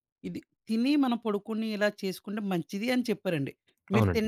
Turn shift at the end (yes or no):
no